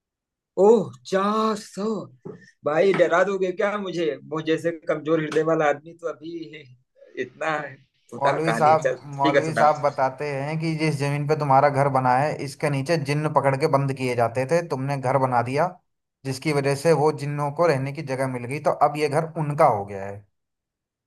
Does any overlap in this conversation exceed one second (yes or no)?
yes